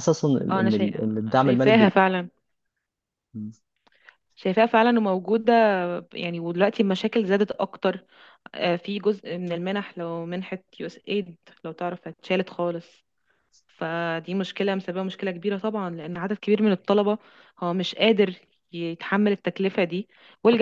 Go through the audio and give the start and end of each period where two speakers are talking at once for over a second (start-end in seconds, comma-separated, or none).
0.5-1.9